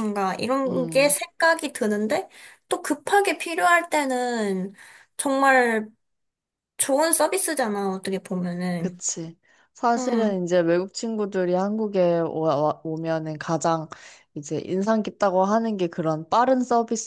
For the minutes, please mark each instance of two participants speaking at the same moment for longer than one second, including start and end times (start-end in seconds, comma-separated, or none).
none